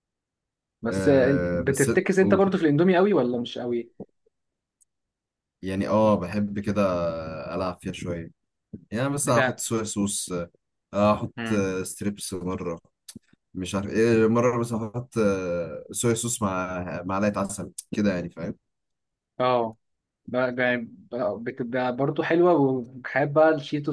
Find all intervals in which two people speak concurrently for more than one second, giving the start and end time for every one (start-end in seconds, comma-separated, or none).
0.9-2.4